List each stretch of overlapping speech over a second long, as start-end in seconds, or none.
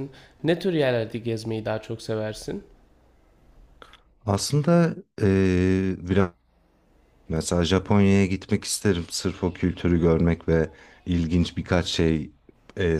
none